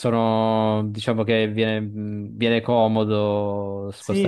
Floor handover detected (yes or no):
yes